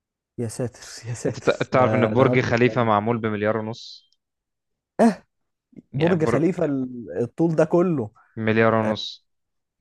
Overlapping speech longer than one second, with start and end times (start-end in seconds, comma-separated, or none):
1.3-2.9